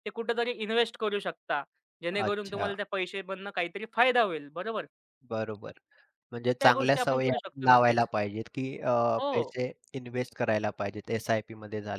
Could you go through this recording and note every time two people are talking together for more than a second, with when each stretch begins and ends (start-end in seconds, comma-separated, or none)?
6.5-8.1